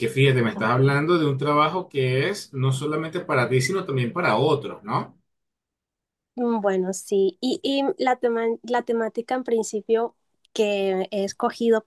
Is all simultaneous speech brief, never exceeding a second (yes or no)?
yes